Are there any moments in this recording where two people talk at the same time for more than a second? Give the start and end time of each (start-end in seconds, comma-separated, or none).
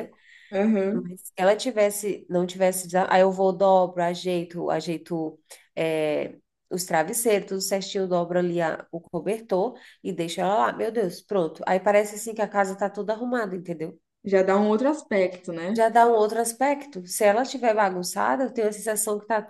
none